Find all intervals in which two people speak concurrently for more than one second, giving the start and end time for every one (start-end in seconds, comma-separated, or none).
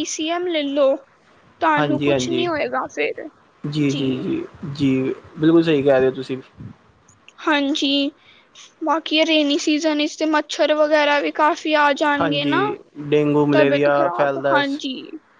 13.5-14.8